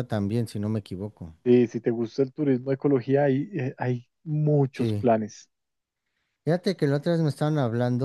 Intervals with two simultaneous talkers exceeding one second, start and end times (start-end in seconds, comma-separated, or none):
none